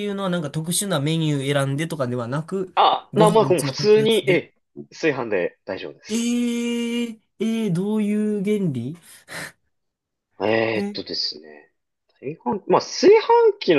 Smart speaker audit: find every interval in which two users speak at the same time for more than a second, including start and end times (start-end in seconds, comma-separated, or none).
3.1-4.4